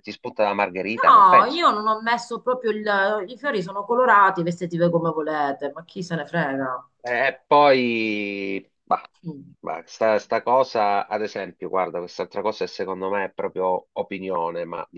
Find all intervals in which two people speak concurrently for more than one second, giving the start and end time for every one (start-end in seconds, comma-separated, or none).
none